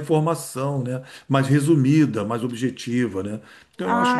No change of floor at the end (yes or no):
no